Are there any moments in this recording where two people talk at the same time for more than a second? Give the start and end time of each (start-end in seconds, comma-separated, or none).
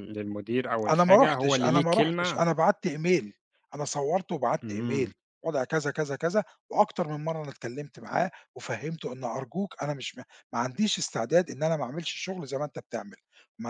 0.9-2.4